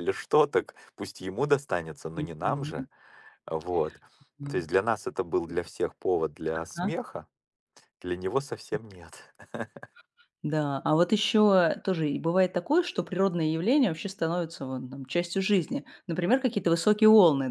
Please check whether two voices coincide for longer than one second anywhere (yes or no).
no